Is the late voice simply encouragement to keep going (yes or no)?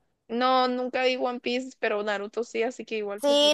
no